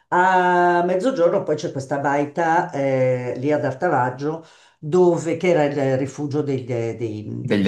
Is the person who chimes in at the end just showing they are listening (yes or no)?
yes